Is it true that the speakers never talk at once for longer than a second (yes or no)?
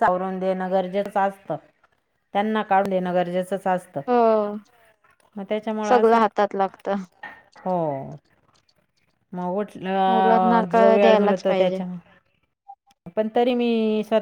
no